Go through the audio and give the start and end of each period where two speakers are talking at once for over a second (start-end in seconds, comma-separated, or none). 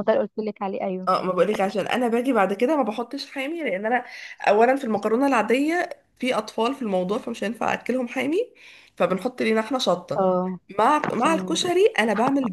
none